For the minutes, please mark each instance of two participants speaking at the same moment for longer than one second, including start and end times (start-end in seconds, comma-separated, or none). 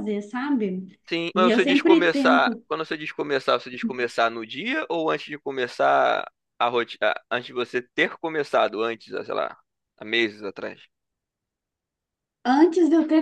1.4-2.6